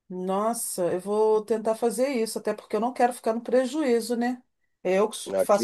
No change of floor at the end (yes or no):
yes